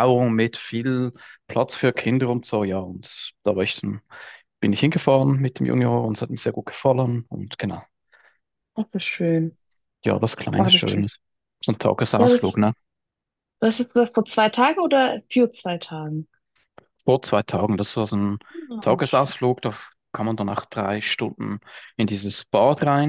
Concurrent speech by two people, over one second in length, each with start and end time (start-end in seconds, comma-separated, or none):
none